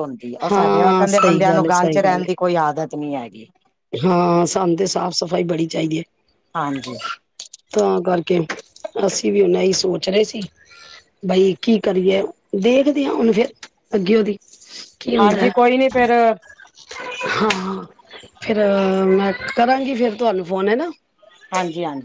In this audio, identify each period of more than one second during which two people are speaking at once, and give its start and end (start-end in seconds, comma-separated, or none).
0.5-2.3